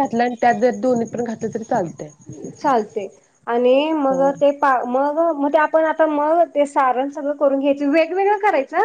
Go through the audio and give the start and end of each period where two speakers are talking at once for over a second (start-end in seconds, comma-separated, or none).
none